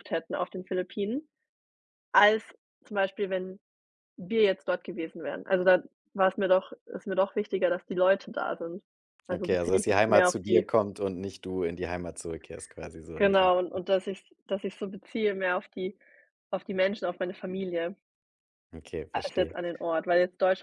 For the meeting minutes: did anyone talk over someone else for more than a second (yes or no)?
yes